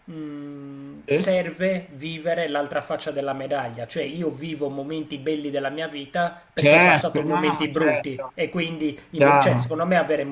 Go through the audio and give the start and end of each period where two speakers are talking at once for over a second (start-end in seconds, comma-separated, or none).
6.5-8.3